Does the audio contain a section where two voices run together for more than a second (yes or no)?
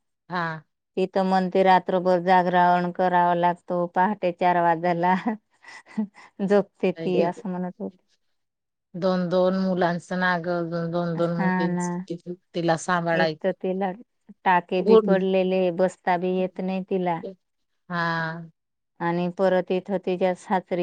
no